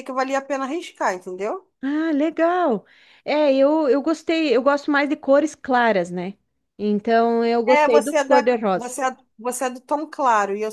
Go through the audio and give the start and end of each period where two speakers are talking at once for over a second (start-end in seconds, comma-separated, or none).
7.7-9.0